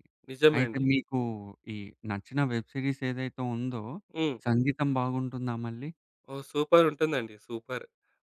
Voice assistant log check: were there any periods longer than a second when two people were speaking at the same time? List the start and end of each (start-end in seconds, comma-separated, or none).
none